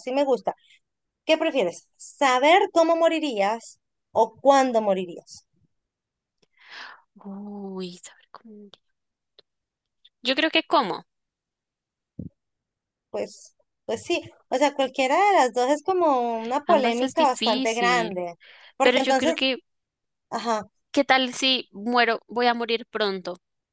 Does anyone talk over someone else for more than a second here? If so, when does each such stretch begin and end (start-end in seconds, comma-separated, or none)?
16.7-18.2